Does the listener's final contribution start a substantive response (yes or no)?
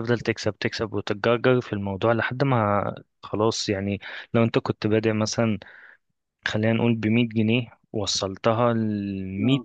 no